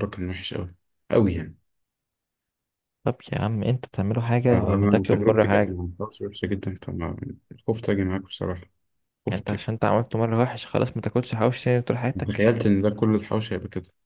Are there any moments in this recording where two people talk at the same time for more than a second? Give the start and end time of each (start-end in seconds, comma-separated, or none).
4.5-5.8